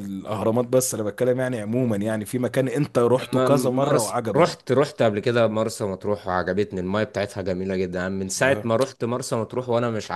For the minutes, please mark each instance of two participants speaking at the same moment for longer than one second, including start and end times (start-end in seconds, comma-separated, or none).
3.2-4.5